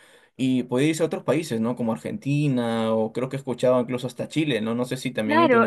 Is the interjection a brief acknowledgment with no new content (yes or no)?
no